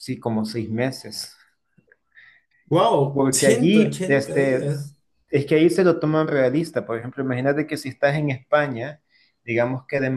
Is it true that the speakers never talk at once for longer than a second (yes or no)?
no